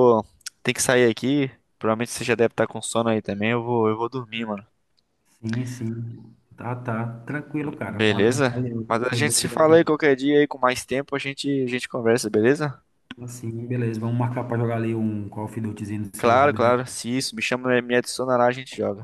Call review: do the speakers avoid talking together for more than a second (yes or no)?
no